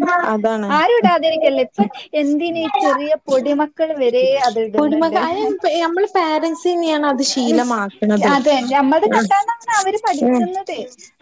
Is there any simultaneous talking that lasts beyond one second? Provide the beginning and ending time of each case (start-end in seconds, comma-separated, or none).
none